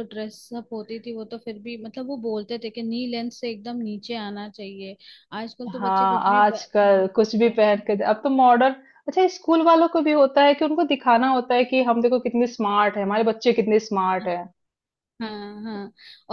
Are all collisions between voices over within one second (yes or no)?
no